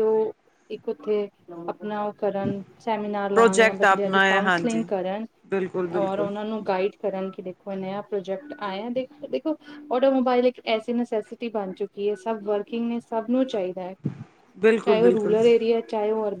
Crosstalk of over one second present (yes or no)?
yes